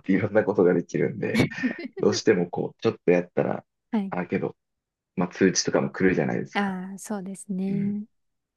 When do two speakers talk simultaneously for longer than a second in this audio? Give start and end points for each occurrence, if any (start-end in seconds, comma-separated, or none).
none